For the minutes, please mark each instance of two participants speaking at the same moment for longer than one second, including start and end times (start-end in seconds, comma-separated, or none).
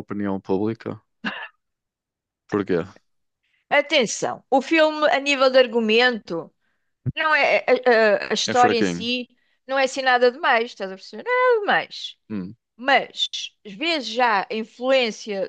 none